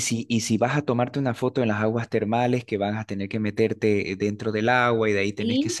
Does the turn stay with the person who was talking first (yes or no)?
yes